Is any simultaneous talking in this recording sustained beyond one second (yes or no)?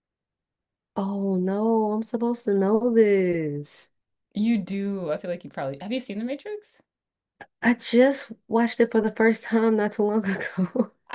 no